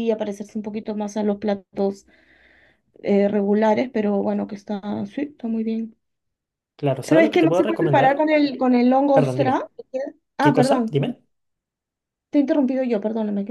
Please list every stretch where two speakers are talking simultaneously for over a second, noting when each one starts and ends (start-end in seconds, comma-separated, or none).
7.0-8.3